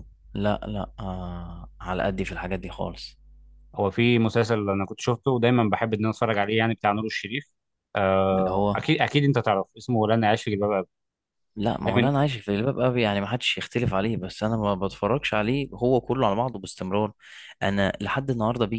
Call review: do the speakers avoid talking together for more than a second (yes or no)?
yes